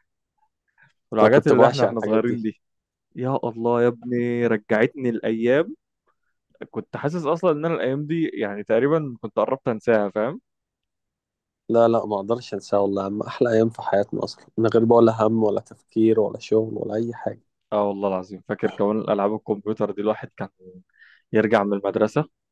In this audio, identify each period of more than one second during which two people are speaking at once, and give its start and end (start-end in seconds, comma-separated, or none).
1.2-2.5